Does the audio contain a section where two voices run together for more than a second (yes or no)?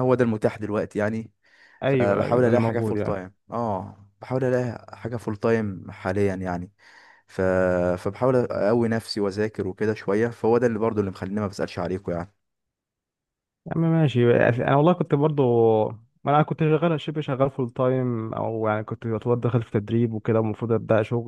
yes